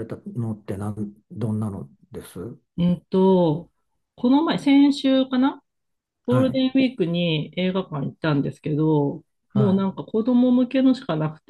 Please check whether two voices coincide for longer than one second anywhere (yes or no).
no